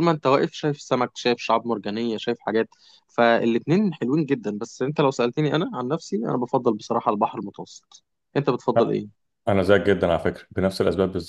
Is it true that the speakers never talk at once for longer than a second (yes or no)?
yes